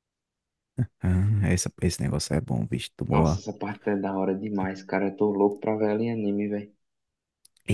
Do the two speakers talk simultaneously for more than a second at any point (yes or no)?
no